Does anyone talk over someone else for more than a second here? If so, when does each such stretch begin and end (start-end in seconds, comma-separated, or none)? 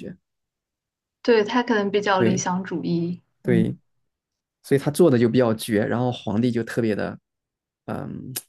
none